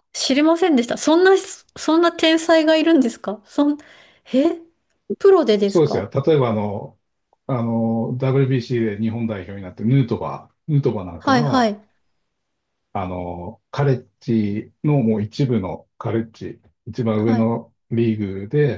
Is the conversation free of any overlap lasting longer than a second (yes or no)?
yes